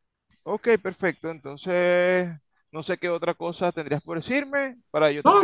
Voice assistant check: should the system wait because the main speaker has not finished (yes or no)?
no